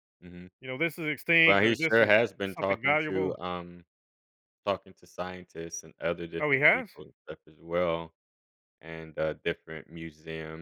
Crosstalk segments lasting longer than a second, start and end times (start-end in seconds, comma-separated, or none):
1.4-3.4